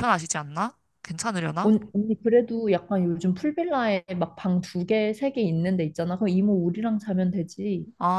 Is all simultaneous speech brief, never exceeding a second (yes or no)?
yes